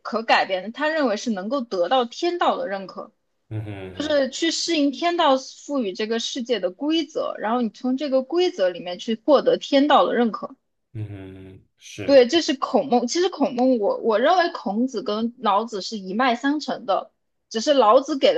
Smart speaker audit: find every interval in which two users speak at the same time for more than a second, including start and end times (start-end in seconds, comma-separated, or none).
none